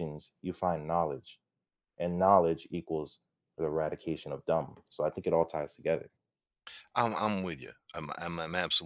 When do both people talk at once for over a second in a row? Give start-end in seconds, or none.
none